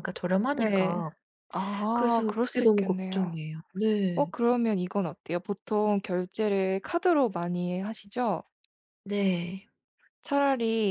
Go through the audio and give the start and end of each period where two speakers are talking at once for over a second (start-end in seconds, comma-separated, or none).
1.9-3.3